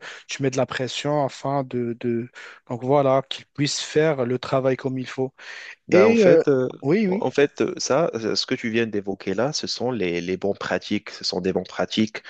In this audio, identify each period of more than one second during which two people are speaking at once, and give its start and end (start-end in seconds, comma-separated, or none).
none